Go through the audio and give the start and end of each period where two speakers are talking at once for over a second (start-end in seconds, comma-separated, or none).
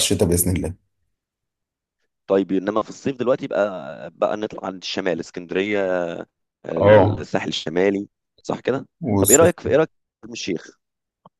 none